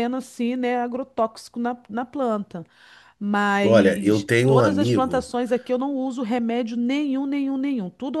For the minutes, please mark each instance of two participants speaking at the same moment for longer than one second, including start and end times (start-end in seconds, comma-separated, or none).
3.6-5.3